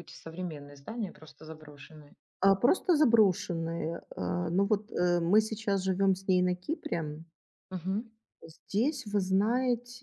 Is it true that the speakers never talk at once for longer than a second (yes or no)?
yes